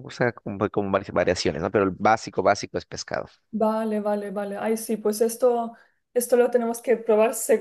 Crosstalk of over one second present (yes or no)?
no